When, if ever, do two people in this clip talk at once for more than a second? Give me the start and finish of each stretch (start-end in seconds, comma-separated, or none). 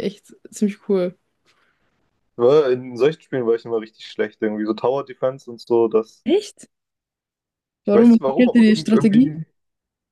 7.9-9.4